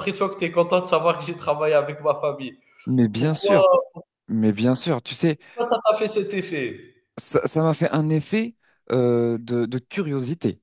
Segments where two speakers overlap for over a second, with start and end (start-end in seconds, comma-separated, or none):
none